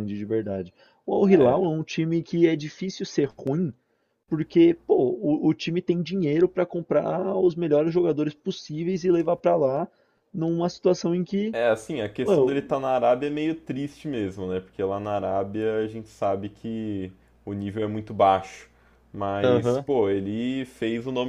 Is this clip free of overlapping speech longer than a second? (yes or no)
yes